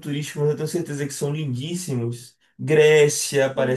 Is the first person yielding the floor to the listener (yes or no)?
yes